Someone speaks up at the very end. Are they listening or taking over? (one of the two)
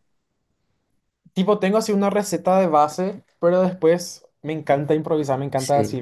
listening